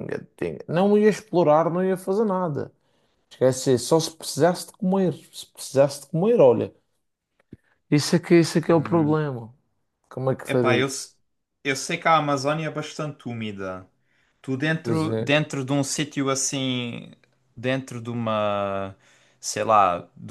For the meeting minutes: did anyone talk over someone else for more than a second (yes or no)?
no